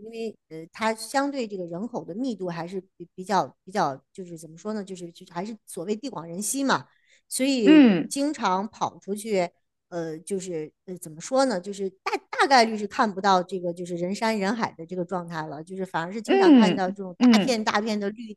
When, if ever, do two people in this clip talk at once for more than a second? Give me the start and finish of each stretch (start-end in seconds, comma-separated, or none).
16.3-17.6